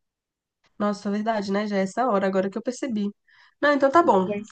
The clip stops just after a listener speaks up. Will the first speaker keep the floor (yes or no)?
yes